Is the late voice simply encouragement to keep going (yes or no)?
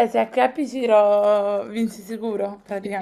no